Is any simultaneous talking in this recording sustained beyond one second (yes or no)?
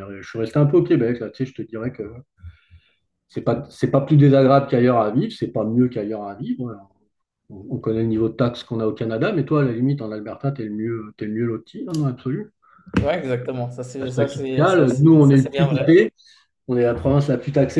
yes